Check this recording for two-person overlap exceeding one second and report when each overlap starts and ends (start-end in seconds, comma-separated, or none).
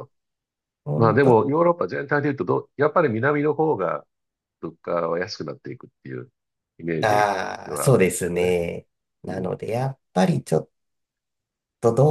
7.0-8.6